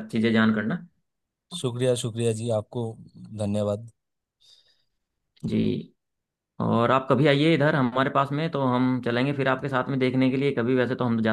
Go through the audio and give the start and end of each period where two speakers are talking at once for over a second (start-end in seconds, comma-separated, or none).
none